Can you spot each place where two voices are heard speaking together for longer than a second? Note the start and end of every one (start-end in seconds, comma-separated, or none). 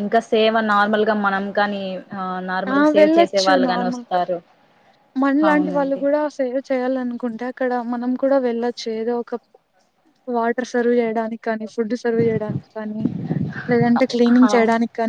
none